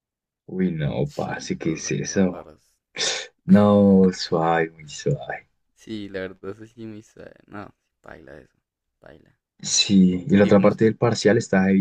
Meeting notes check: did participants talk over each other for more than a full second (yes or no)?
yes